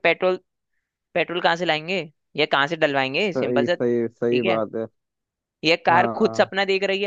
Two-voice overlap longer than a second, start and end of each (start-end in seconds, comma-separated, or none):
3.4-4.6